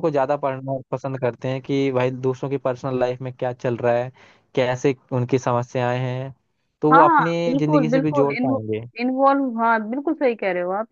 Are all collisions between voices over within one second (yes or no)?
no